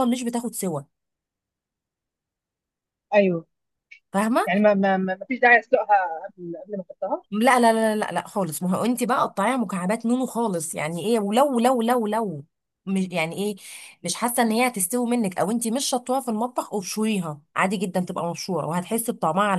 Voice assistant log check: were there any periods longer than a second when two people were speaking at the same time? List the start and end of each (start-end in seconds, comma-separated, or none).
none